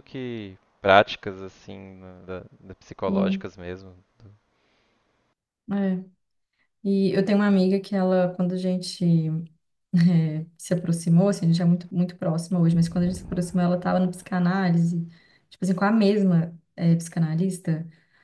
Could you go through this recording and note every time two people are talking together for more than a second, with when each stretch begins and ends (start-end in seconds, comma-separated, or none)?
none